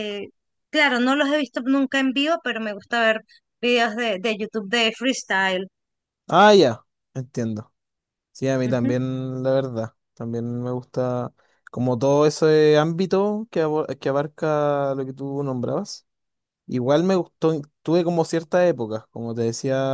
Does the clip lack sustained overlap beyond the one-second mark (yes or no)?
yes